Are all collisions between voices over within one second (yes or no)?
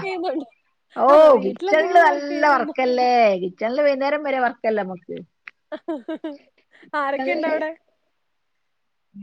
no